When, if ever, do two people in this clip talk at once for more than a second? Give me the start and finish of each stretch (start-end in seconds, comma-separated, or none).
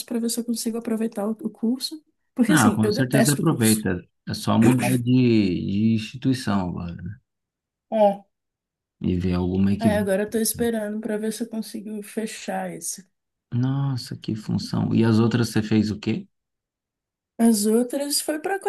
2.5-3.9